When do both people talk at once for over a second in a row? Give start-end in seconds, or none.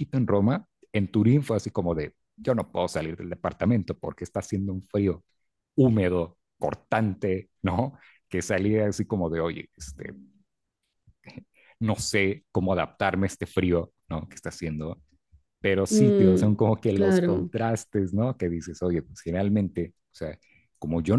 15.9-17.5